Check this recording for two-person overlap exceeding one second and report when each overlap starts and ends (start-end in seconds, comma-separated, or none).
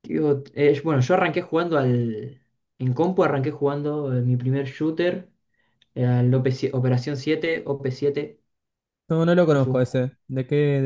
none